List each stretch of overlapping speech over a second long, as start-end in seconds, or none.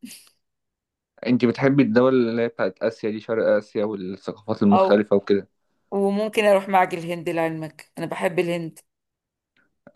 none